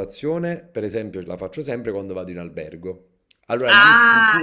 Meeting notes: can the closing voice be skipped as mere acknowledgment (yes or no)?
no